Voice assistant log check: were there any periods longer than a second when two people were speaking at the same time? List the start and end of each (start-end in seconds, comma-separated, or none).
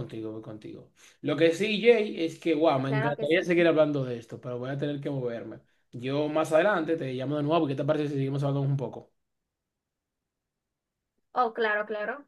none